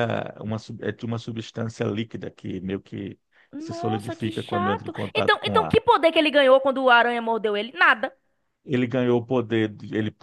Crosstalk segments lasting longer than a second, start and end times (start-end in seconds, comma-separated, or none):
3.6-5.8